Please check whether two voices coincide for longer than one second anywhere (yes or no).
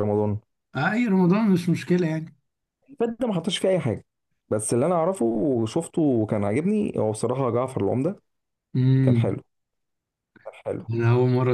no